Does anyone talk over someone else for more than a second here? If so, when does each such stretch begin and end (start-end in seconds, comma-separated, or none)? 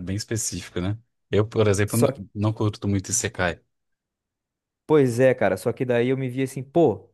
none